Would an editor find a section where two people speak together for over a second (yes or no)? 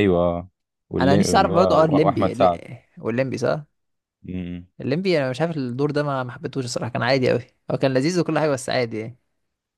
yes